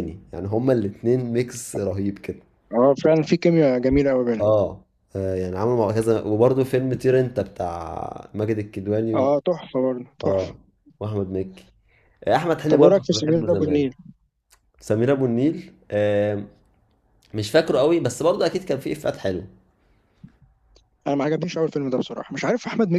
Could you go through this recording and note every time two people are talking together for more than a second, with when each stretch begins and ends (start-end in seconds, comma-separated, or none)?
12.7-13.9